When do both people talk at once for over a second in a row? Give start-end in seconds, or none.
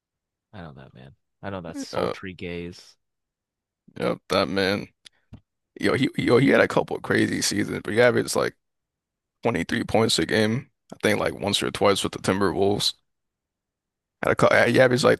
none